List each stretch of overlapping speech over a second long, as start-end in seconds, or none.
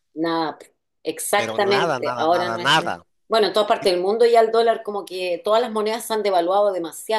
1.4-3.0